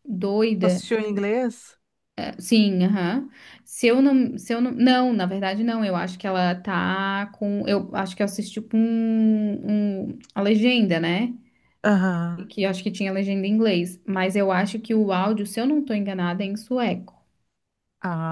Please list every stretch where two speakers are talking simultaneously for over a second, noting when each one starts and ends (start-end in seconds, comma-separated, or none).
none